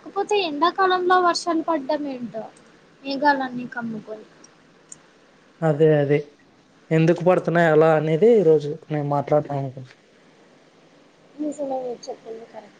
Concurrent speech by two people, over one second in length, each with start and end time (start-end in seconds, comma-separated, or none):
none